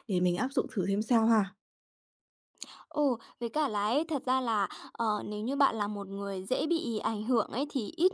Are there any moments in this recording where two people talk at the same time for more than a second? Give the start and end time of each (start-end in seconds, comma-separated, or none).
none